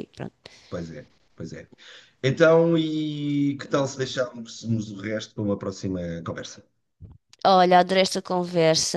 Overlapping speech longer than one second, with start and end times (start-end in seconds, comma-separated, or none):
none